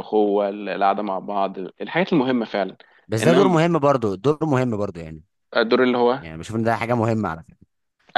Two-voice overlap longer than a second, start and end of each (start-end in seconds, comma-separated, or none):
none